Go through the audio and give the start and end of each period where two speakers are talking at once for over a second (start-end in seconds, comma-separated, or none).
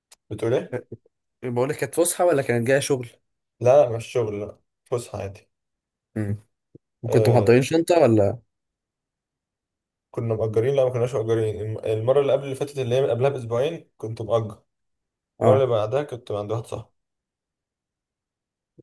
none